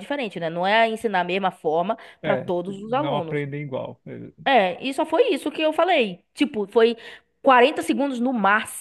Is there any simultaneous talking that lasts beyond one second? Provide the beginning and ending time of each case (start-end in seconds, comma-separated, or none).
2.2-3.5